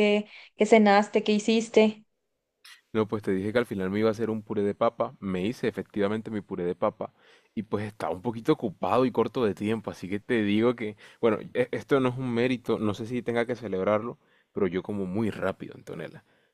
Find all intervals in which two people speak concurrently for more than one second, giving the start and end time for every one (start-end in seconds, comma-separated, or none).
none